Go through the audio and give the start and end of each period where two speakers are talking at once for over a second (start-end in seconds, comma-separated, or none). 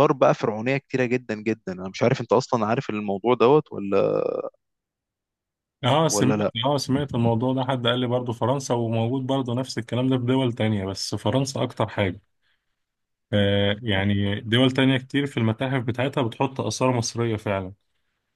none